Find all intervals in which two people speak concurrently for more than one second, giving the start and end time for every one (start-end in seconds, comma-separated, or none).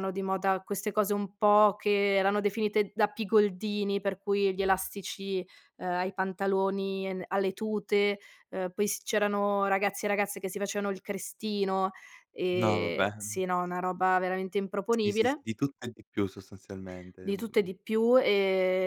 none